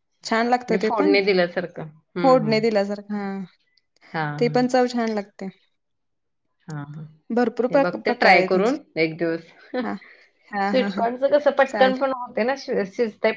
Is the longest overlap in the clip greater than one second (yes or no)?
no